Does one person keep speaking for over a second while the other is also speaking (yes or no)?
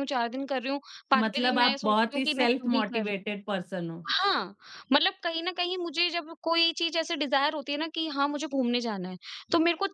yes